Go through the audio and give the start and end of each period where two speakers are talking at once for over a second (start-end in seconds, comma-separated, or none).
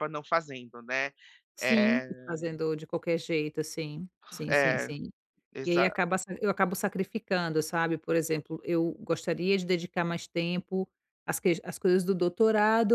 none